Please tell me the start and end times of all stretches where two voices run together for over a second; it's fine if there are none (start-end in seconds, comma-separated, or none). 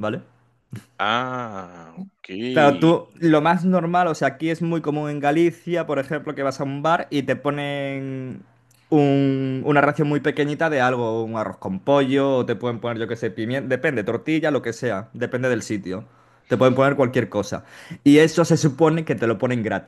none